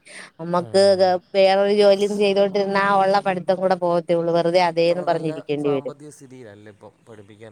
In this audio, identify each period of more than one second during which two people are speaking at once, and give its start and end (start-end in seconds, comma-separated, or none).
none